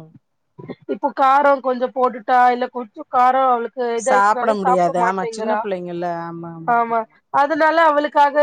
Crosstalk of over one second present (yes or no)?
yes